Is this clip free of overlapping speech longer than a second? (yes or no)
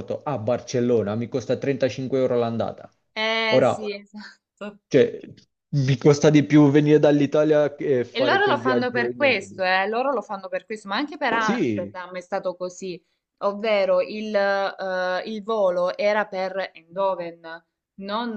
no